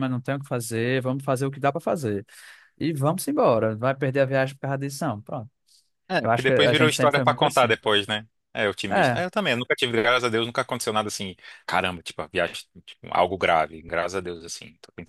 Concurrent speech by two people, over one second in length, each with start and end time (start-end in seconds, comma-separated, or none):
6.2-7.8